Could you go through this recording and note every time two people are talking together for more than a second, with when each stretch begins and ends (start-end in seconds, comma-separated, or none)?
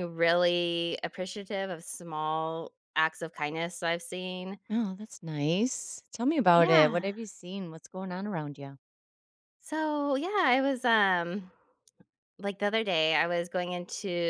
none